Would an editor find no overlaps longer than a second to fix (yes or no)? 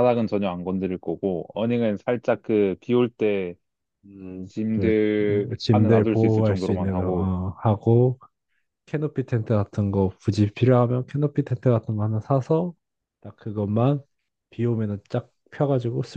no